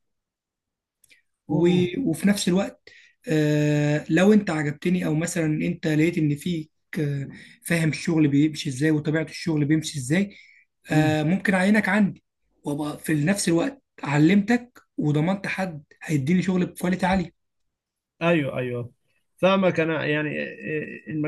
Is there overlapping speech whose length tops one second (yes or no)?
no